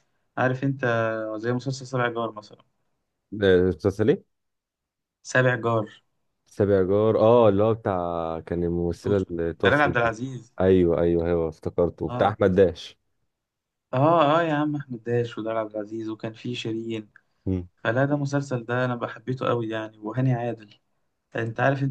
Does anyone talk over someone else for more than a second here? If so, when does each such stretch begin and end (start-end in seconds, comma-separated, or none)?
8.9-10.2